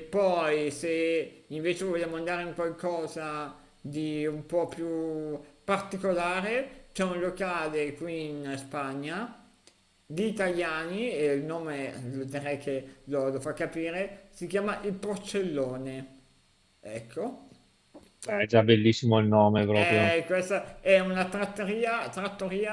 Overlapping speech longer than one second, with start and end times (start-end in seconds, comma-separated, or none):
none